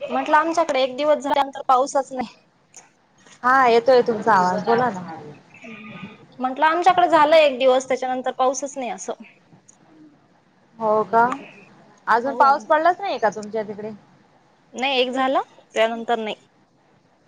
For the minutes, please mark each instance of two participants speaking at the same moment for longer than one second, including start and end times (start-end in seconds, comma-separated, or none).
none